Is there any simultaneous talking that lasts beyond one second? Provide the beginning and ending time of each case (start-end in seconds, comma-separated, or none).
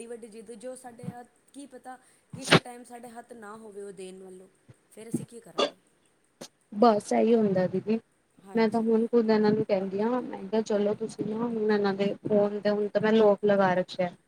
none